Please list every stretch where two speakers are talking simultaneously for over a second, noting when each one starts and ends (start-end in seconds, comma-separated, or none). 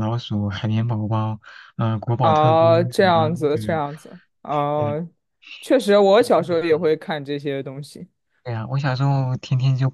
2.2-3.7